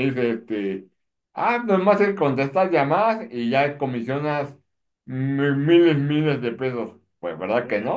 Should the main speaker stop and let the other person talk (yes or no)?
yes